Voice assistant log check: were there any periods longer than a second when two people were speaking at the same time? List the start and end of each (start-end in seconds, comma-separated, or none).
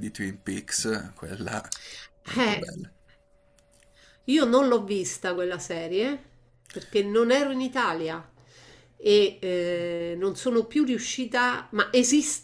none